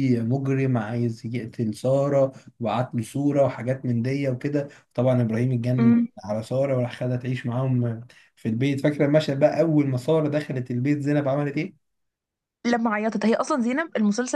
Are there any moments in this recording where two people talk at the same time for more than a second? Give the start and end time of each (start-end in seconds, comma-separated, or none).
none